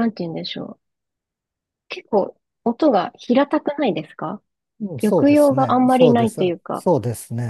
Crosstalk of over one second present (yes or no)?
yes